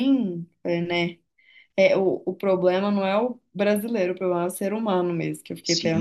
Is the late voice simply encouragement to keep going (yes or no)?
no